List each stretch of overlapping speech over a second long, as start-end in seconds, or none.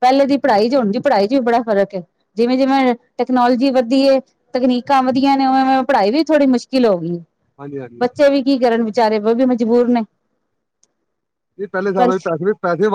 none